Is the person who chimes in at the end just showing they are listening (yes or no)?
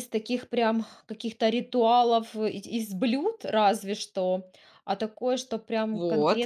no